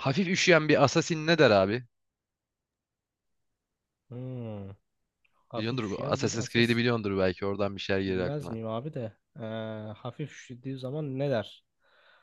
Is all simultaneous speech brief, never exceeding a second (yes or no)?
no